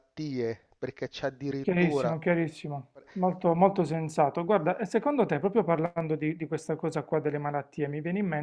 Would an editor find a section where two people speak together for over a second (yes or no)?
no